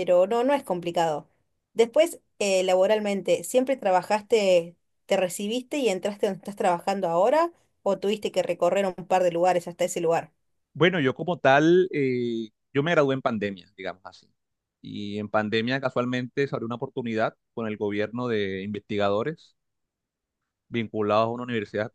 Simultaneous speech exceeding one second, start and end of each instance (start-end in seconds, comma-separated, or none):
none